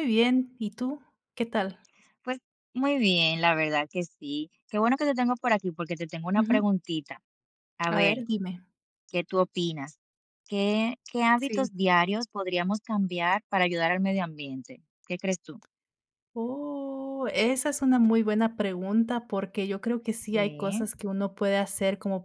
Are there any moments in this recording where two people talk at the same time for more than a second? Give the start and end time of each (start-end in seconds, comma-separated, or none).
none